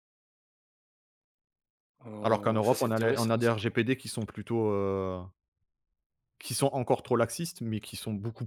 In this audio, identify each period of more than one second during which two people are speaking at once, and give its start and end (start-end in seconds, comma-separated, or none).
2.2-3.5